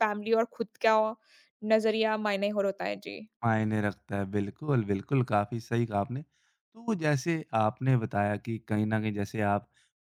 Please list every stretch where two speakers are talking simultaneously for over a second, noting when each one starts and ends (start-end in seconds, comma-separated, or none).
none